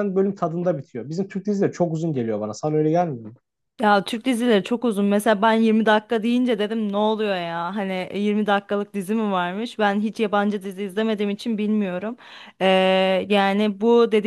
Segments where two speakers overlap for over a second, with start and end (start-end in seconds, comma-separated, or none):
none